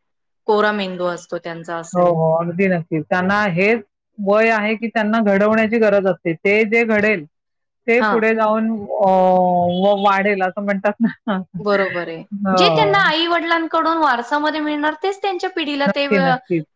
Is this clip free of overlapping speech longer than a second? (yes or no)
yes